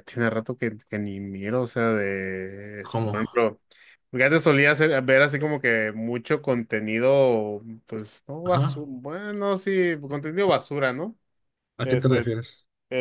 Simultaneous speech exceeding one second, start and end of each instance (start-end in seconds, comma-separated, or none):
none